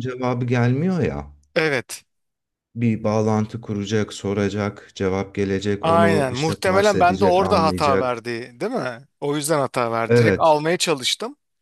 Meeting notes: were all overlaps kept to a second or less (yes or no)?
no